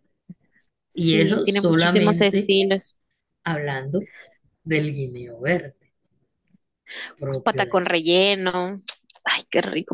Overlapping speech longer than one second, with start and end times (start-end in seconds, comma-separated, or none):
0.9-2.5